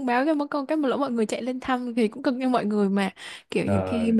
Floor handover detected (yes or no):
no